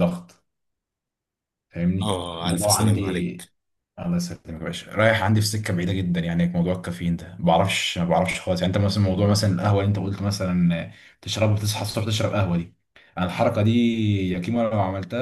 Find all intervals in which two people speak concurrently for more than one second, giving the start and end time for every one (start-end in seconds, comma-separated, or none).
2.0-3.5